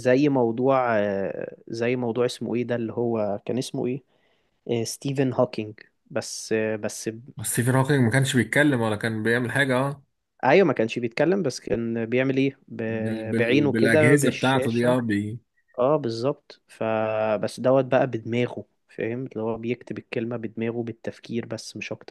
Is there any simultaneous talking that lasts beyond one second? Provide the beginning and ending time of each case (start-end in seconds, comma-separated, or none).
12.8-15.0